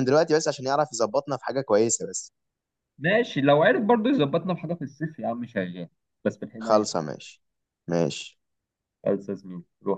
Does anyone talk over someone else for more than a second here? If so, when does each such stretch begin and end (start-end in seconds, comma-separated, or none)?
none